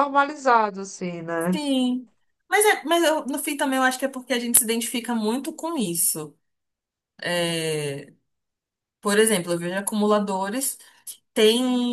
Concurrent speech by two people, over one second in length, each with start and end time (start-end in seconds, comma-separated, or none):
none